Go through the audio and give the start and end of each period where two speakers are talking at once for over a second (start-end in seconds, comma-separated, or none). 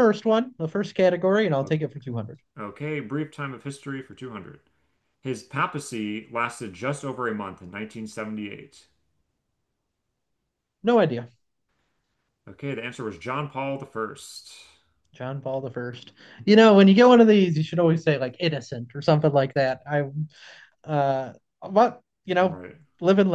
none